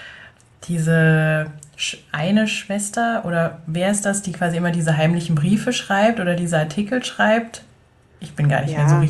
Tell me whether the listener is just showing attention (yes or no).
yes